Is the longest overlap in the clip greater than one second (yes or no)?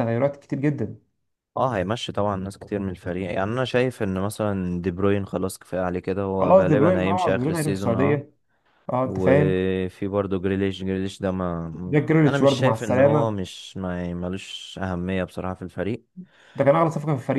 yes